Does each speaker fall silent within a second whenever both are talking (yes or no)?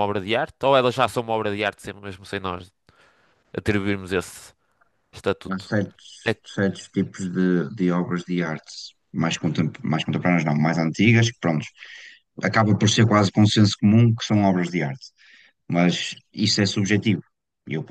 yes